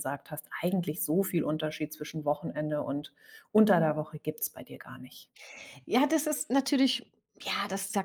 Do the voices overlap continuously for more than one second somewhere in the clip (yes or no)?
no